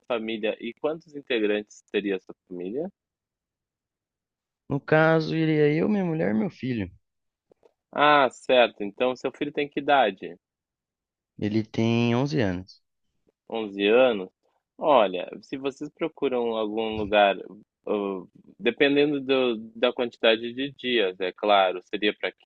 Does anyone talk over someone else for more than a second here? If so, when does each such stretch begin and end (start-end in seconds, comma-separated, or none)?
none